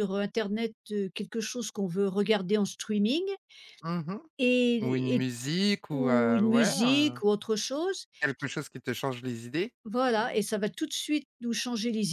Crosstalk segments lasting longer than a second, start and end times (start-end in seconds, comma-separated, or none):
5.9-7.2